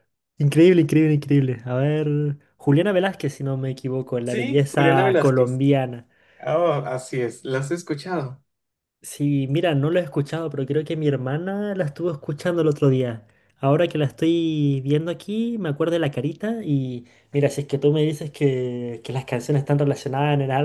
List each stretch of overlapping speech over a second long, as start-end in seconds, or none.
4.2-5.6